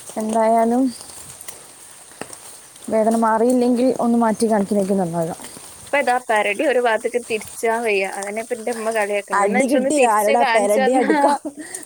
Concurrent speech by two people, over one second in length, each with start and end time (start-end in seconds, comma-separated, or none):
9.4-11.3